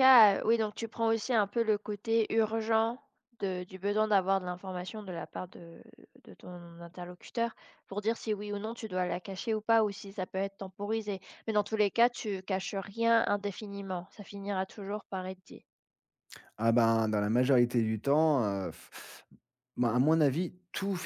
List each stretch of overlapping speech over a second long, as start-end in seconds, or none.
none